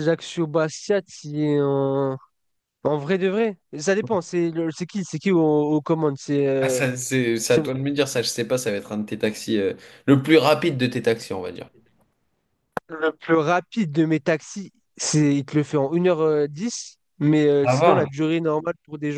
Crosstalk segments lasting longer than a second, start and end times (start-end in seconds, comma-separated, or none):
none